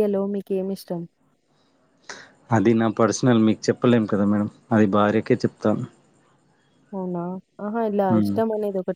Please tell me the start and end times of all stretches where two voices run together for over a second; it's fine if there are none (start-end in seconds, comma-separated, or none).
none